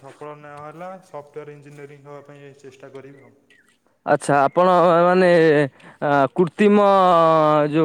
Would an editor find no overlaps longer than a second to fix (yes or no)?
yes